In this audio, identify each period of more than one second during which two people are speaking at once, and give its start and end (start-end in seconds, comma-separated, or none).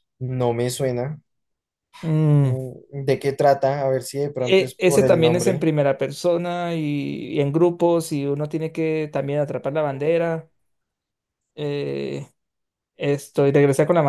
4.4-5.7